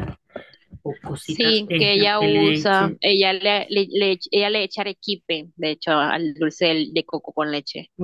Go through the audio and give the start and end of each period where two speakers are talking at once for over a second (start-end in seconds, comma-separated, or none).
1.2-3.0